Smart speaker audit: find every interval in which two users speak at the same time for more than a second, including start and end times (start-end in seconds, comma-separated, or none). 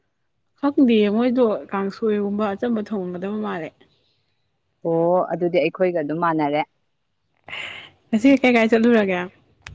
none